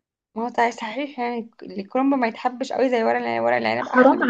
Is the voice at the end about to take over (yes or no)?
yes